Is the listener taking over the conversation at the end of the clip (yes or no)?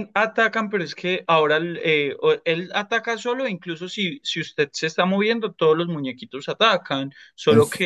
no